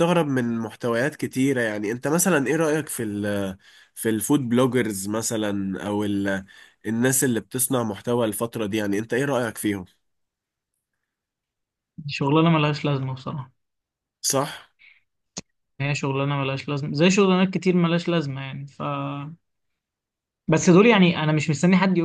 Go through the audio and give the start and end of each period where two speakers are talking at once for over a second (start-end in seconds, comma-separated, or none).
none